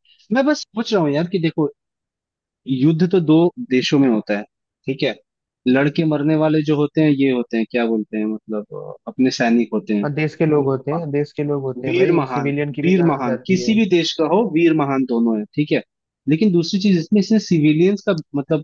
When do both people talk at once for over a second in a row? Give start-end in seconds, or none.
11.8-13.8